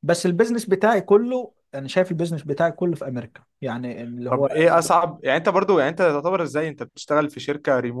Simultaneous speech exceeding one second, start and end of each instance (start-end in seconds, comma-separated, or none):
none